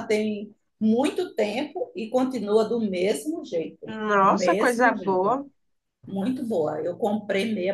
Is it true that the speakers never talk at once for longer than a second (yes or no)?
no